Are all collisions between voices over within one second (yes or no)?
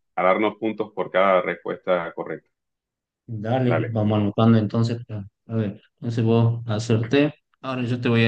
yes